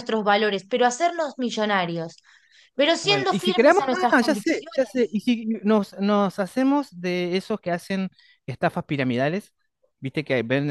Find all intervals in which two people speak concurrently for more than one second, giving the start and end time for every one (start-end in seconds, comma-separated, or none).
3.0-5.2